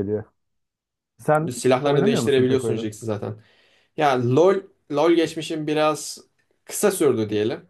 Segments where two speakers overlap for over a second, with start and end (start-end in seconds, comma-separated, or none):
1.5-2.9